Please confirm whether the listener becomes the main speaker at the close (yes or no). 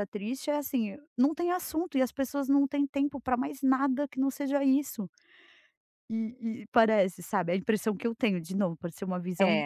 yes